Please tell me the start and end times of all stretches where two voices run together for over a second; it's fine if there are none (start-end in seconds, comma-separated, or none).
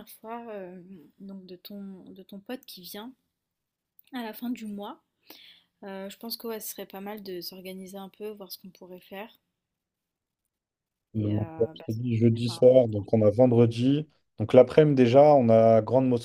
11.1-12.9